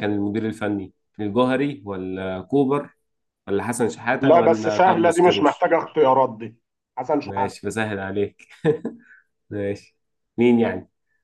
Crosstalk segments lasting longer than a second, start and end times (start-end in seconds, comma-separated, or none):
4.2-5.7